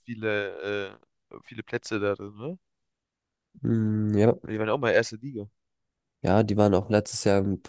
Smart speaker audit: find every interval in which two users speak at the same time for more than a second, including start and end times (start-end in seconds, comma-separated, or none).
none